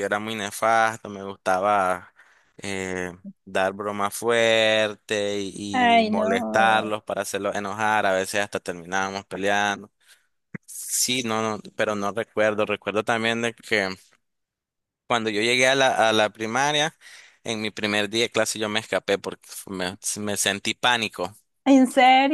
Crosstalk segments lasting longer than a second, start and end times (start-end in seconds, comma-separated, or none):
5.7-6.9